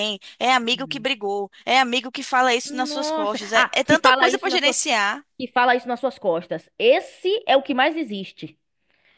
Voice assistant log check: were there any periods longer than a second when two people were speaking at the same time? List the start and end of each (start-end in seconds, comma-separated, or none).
2.6-4.8